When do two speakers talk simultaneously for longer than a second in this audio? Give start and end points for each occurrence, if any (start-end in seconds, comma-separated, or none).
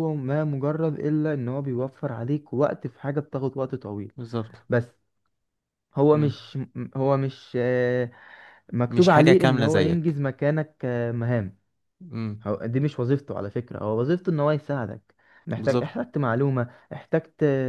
8.9-10.2